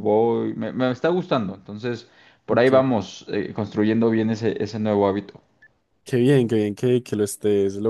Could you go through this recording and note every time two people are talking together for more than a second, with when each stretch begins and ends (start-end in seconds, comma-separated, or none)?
none